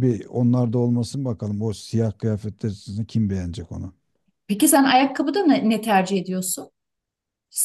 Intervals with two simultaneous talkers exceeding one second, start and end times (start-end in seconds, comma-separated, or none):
none